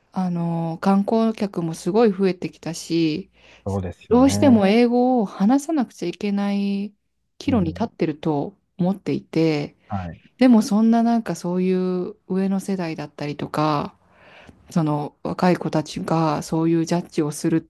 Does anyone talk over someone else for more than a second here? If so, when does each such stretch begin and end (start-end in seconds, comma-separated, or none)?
none